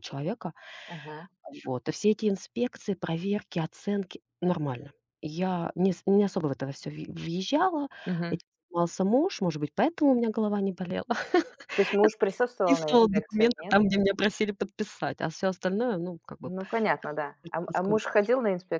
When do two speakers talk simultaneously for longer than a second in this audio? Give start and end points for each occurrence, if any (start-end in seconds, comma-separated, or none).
12.0-13.8